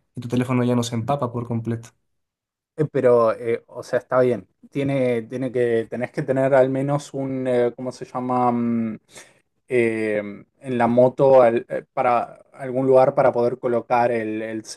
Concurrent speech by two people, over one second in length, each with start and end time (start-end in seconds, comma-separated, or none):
none